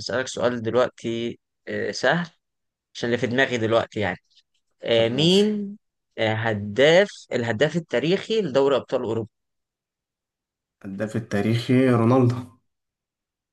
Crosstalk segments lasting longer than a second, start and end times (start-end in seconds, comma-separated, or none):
none